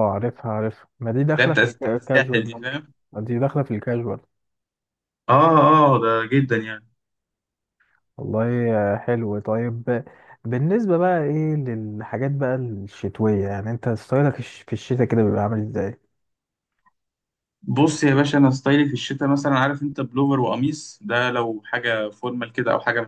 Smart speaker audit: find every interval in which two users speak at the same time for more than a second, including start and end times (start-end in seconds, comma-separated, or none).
1.4-2.8